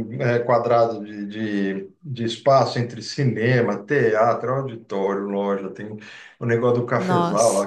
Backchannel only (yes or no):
yes